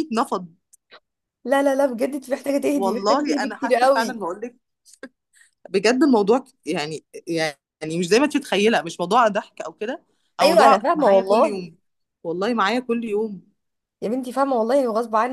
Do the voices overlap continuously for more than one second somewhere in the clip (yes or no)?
yes